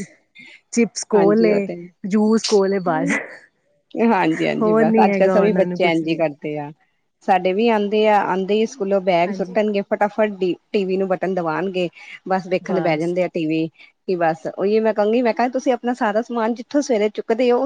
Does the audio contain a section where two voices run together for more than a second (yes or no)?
yes